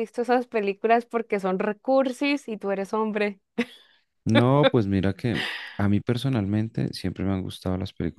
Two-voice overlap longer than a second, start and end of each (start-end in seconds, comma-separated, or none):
none